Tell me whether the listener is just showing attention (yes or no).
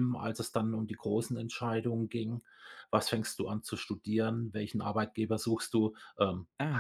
yes